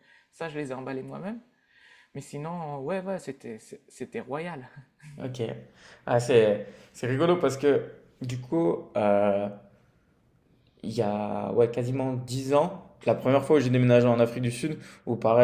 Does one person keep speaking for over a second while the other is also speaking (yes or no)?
no